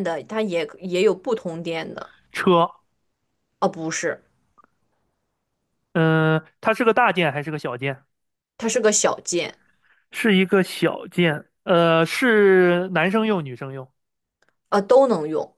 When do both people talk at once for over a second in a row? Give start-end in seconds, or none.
none